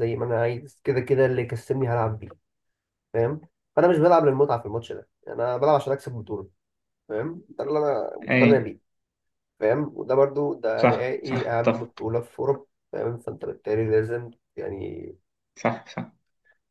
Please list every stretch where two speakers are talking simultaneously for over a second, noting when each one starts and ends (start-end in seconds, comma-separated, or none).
10.8-12.1